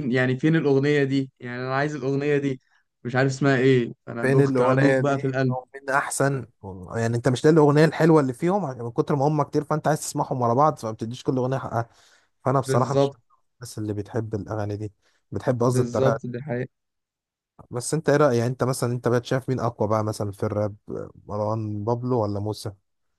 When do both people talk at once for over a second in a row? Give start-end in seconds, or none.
4.2-5.6